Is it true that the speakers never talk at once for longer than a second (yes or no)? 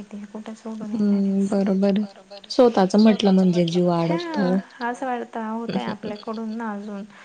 no